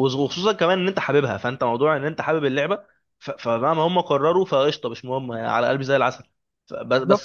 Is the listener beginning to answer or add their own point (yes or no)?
yes